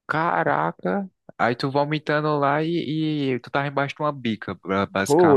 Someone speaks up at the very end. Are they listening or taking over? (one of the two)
taking over